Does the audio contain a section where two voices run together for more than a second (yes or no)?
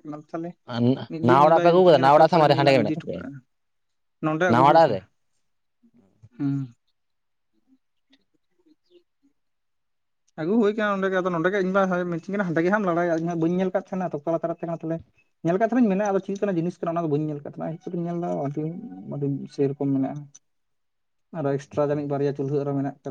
yes